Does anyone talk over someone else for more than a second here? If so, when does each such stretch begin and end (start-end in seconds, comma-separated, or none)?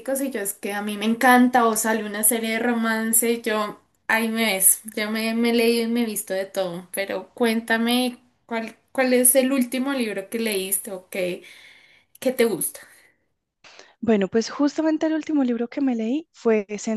none